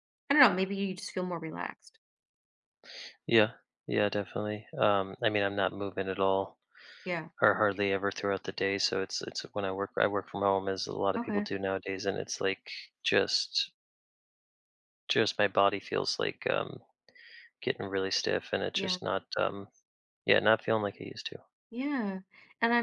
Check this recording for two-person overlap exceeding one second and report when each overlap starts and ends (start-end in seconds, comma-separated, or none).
none